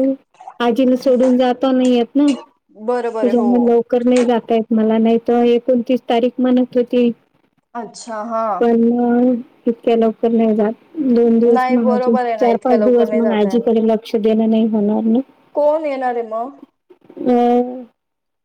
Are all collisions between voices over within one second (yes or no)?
no